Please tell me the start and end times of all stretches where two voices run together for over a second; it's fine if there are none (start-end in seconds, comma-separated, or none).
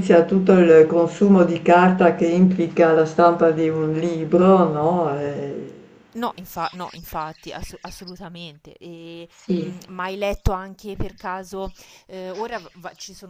none